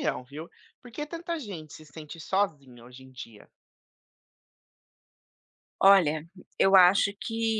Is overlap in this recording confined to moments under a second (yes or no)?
yes